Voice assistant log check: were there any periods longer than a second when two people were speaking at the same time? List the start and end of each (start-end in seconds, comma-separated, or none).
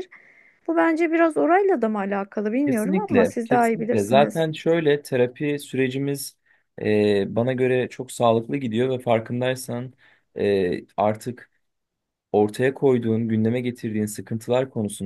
2.6-4.5